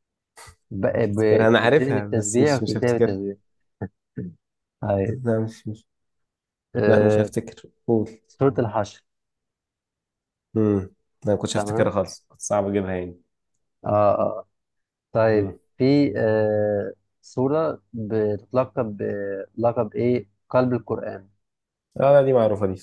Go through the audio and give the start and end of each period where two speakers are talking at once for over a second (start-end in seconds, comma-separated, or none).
1.0-3.2